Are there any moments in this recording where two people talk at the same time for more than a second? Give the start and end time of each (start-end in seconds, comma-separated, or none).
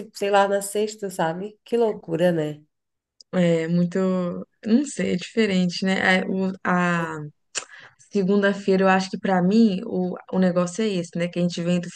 none